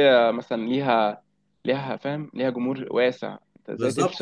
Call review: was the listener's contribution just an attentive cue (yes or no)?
no